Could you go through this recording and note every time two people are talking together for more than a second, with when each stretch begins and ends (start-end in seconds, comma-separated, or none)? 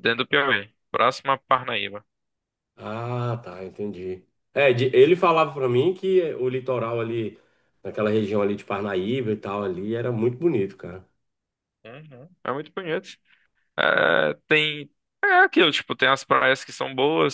none